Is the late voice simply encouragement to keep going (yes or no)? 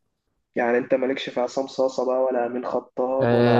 no